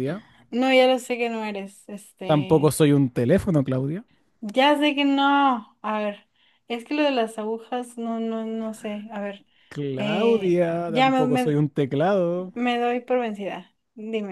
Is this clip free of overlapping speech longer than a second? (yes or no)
no